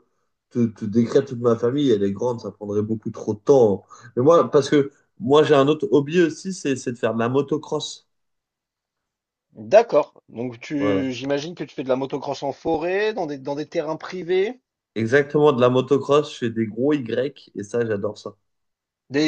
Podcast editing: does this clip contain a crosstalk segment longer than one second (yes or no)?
no